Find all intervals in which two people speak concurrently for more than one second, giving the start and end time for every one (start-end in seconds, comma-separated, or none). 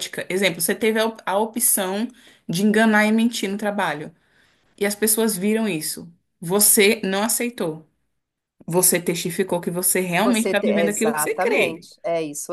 10.2-11.9